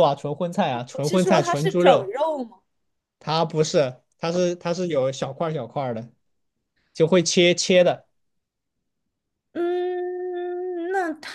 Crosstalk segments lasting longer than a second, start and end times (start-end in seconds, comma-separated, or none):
0.9-2.1